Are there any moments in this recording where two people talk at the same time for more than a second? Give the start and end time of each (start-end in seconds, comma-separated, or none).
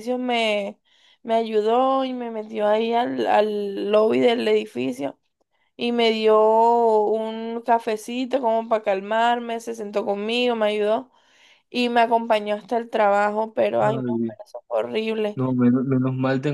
none